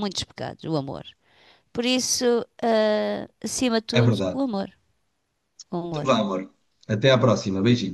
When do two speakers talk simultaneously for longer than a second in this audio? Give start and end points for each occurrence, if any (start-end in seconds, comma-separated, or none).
none